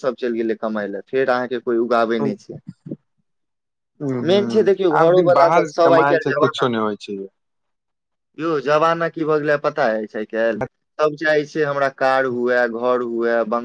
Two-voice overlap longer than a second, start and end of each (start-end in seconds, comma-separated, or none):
4.3-6.7